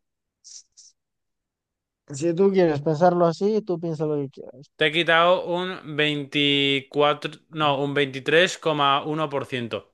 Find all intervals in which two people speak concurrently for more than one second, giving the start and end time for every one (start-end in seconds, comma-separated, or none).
none